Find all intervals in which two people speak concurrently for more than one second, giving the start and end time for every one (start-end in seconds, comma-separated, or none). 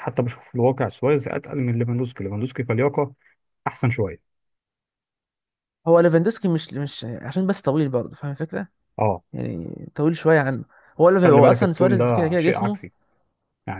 11.1-12.8